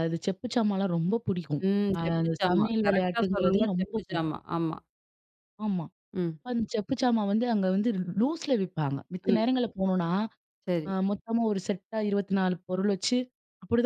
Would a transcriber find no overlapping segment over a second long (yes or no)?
no